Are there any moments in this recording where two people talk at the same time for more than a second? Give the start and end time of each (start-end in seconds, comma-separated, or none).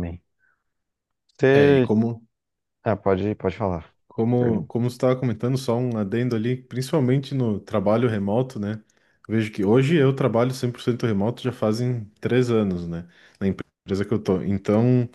none